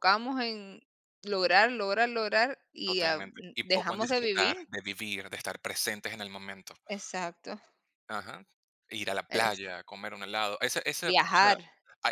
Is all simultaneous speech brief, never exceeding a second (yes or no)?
no